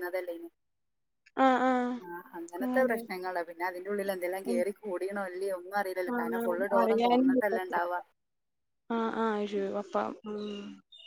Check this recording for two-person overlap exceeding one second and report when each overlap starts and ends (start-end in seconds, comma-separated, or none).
6.2-7.8